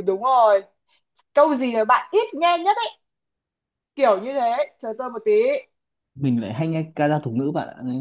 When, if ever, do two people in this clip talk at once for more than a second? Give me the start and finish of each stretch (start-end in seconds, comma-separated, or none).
none